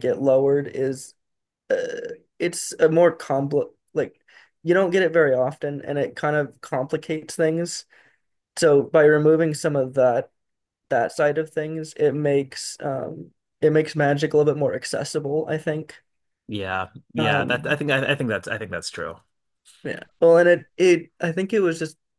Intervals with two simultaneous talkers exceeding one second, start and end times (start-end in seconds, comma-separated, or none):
none